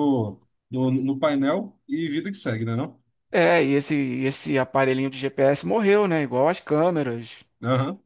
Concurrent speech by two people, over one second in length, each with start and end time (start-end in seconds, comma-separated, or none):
none